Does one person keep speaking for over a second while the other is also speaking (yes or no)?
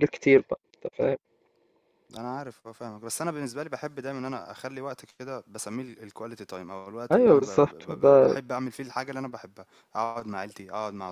yes